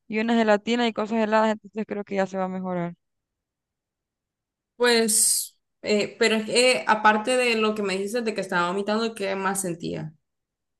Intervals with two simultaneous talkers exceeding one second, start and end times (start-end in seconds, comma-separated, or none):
none